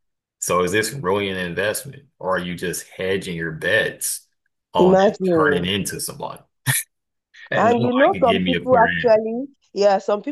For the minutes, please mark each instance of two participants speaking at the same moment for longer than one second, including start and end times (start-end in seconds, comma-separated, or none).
7.5-8.9